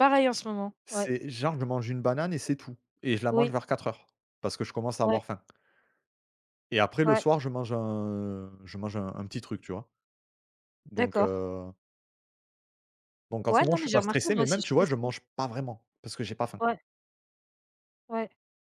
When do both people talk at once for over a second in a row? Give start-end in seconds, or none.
13.5-15.0